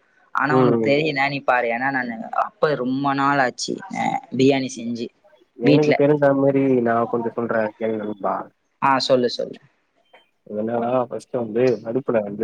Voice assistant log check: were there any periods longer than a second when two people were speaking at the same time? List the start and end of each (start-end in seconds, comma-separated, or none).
none